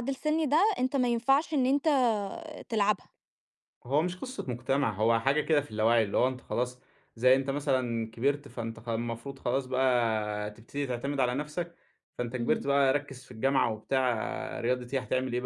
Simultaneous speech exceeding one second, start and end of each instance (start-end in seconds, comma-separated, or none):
none